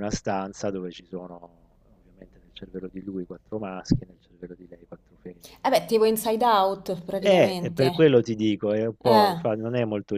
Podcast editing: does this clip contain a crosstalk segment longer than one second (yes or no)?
no